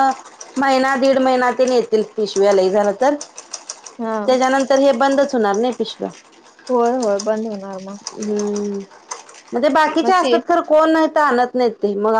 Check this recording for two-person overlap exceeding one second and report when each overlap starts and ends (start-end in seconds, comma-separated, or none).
none